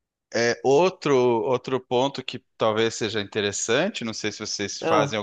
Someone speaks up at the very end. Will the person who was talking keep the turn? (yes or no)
yes